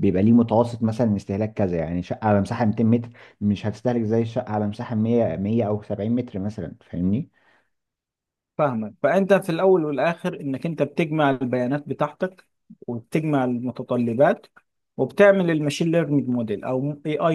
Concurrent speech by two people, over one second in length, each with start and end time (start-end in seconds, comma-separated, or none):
none